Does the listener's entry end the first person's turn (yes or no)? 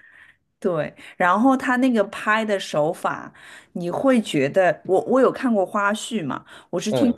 no